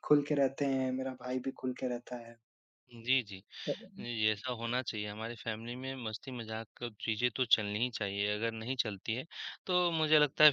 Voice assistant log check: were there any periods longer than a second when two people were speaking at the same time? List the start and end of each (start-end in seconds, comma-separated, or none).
none